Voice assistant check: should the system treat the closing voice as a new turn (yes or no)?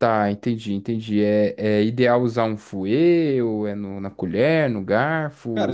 yes